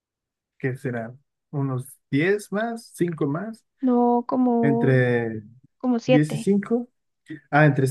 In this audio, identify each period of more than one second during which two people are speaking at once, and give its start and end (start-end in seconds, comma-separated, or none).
none